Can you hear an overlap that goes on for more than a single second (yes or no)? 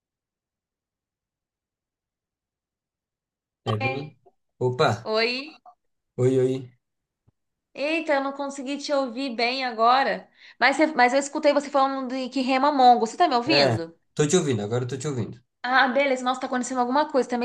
no